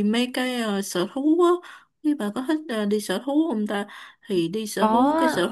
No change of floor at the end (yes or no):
yes